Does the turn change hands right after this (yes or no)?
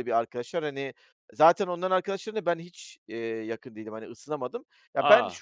no